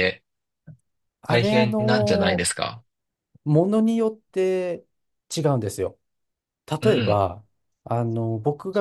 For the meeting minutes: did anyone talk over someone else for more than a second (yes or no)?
yes